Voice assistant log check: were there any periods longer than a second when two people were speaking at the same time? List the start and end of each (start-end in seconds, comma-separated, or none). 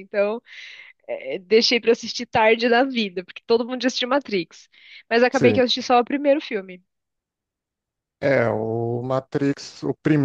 none